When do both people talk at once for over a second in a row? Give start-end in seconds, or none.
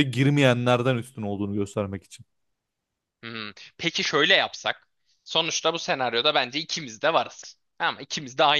none